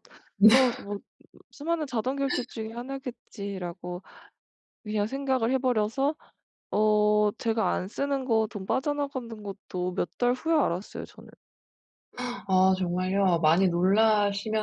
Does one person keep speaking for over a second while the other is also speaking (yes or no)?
no